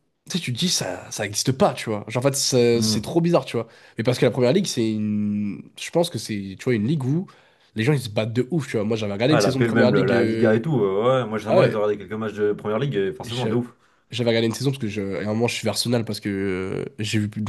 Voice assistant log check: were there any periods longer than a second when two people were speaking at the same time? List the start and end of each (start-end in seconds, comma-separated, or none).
9.3-10.7